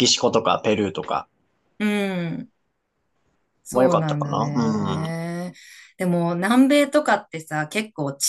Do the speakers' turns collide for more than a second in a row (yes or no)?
yes